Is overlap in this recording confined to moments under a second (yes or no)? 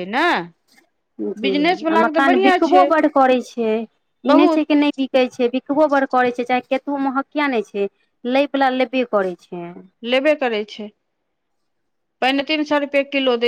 no